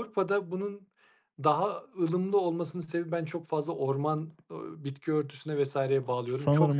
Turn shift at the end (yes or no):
yes